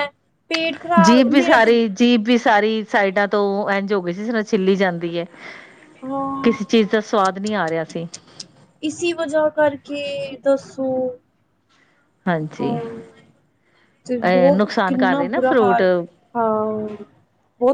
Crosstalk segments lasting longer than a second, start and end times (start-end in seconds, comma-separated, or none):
14.2-15.8